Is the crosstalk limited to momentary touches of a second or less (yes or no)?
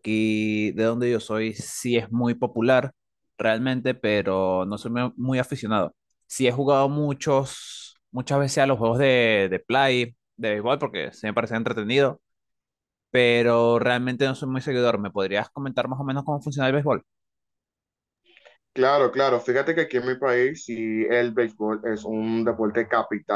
yes